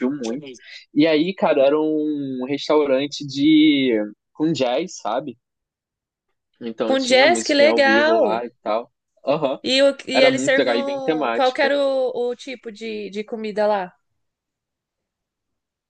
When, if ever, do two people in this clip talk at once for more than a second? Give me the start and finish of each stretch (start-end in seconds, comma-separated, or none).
6.9-8.4, 10.1-11.7